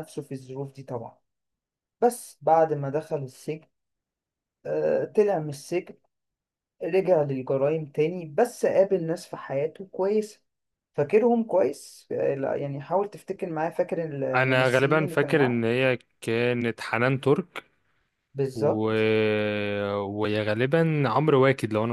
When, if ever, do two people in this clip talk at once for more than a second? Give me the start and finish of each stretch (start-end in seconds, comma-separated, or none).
14.3-15.6